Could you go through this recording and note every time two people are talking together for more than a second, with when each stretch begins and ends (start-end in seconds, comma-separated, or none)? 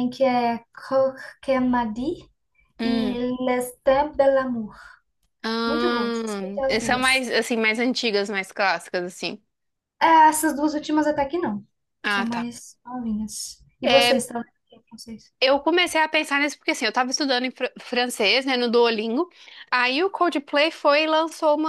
5.7-7.3